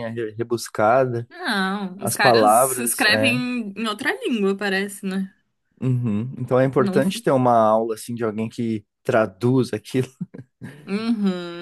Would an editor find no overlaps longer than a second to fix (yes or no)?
no